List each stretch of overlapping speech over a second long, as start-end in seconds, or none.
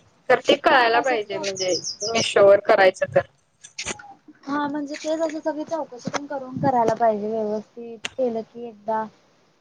none